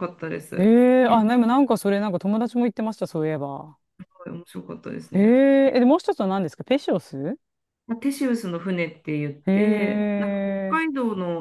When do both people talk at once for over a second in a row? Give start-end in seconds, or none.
9.5-10.8